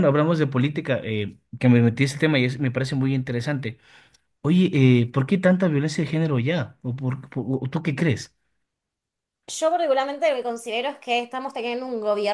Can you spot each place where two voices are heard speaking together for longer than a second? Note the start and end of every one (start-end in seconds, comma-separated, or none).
none